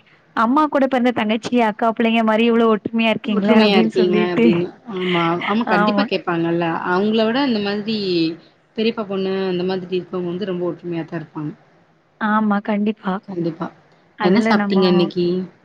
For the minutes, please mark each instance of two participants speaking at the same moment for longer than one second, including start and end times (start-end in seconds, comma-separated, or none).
none